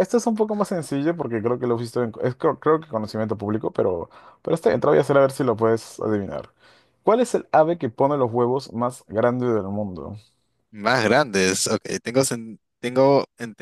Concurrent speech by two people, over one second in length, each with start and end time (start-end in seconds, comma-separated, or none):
none